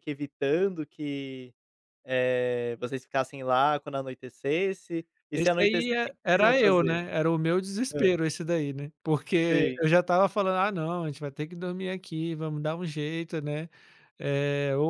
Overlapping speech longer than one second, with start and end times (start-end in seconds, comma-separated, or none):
5.3-7.0